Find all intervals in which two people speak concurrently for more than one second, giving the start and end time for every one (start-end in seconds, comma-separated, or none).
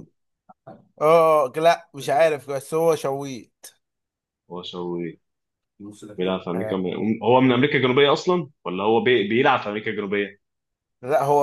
none